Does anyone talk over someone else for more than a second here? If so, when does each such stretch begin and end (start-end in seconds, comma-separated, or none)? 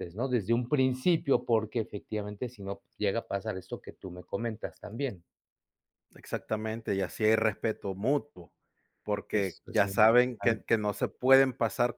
9.3-10.7